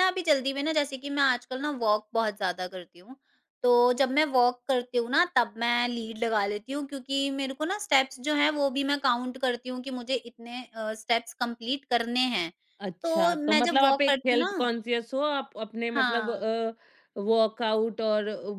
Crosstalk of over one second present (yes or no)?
yes